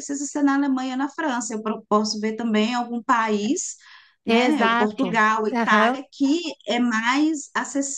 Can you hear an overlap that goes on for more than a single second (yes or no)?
yes